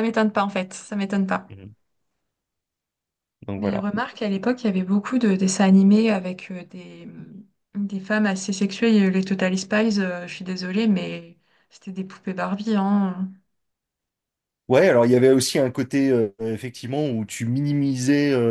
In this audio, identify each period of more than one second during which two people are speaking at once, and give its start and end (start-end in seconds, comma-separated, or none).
none